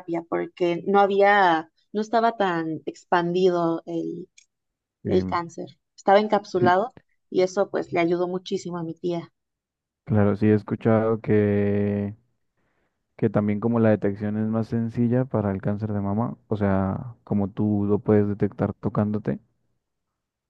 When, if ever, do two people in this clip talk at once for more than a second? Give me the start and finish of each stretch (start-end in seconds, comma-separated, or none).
none